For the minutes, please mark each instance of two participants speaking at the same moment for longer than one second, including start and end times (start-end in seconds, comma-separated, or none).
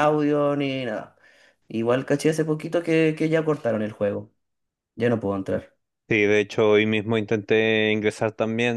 none